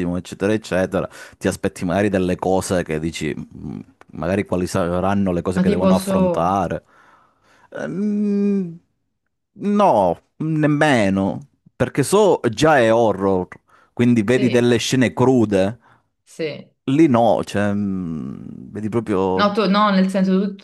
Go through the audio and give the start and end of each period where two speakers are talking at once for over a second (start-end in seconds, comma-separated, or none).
none